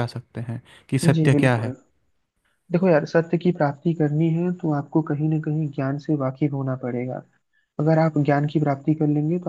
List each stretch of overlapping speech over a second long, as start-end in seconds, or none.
none